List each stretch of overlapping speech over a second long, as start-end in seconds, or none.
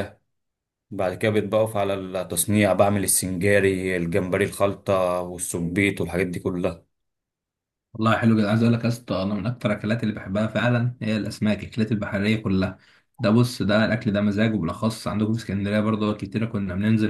none